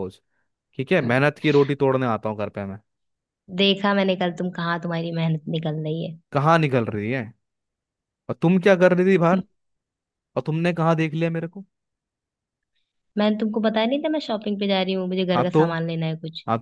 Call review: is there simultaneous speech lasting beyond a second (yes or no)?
no